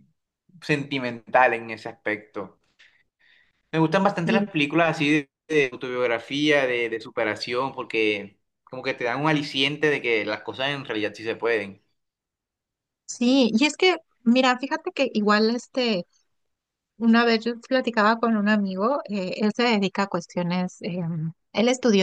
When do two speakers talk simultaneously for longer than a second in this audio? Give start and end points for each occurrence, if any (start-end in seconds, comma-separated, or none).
none